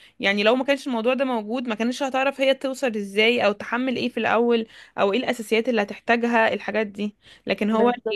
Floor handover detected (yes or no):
no